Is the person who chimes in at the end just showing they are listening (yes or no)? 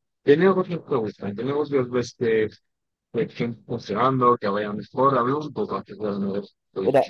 no